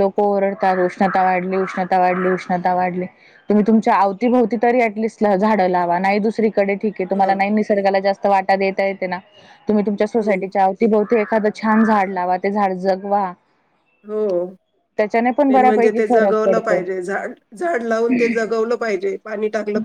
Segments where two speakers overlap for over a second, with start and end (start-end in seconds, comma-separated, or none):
15.5-16.8